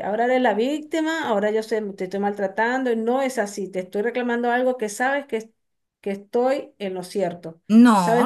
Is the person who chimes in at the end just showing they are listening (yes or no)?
no